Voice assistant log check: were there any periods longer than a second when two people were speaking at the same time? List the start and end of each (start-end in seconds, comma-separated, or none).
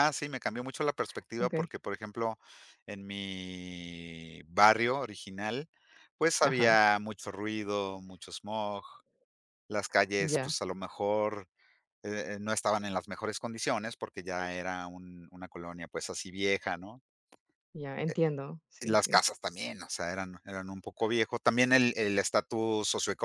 none